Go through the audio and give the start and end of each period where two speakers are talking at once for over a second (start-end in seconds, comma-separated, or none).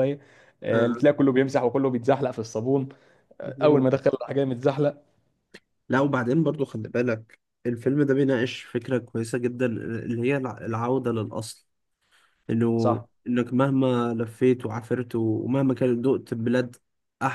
none